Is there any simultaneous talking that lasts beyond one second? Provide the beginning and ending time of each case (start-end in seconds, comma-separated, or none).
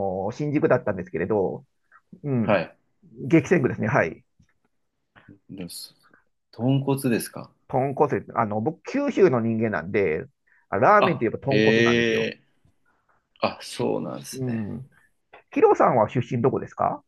11.0-12.3